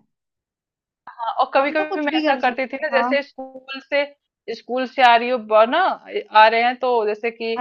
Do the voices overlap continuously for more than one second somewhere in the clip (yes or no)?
yes